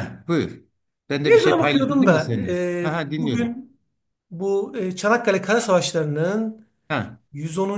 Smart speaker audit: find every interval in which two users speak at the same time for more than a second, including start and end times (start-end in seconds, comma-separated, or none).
1.2-3.6